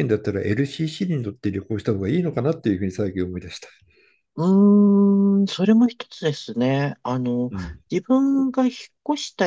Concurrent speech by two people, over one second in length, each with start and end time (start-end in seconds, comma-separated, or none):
none